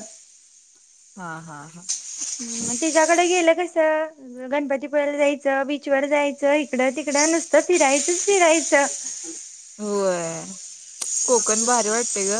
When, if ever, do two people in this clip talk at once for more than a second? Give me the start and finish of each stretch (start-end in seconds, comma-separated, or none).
none